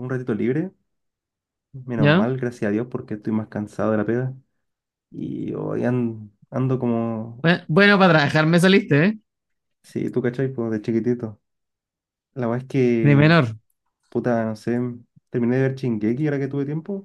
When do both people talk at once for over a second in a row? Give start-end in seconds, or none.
none